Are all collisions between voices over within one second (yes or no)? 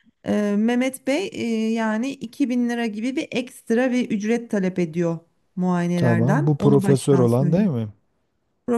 no